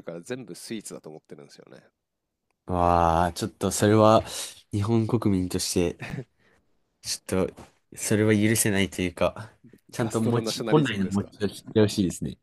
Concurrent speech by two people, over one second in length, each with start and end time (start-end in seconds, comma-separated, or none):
9.9-11.3